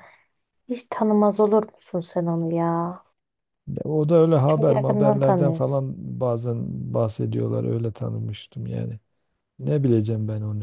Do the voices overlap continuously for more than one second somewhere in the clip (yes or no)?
yes